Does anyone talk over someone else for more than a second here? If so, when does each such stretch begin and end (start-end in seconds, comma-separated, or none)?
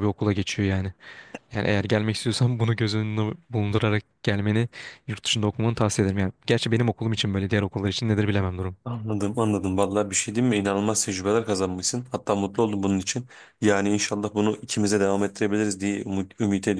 none